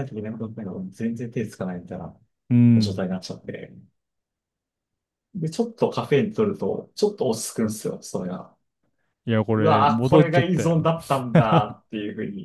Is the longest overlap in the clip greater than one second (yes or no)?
yes